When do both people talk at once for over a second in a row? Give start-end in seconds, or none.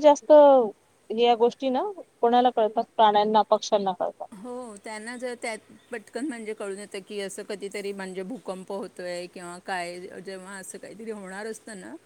none